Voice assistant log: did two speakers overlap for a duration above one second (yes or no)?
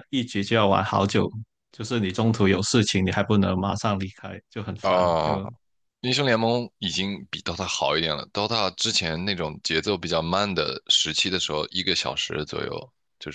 no